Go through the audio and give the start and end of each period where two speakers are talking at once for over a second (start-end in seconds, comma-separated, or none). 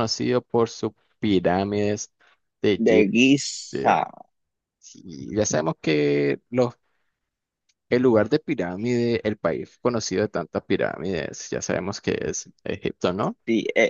2.8-4.0